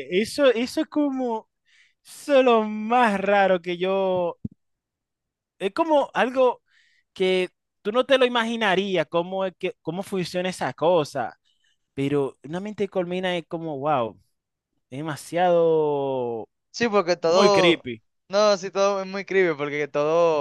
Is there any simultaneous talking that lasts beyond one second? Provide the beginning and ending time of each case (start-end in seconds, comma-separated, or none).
none